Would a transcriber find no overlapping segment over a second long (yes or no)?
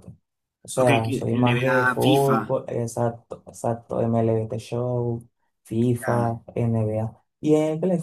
no